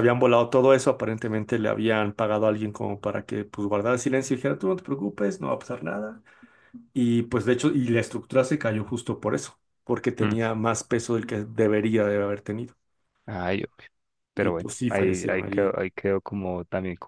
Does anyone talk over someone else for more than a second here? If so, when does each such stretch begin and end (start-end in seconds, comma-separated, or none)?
14.4-15.8